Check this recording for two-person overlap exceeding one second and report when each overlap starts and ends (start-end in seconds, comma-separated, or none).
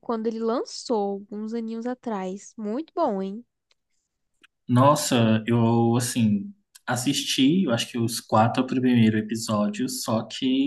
none